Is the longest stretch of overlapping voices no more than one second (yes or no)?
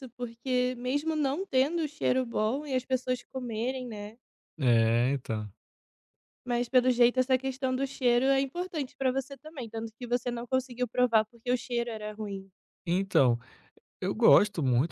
yes